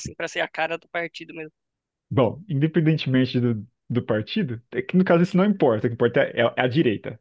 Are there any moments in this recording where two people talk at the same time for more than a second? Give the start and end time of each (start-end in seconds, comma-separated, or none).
none